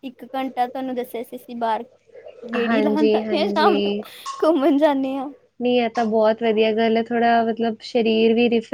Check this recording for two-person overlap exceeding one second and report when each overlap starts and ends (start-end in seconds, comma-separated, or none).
2.7-3.9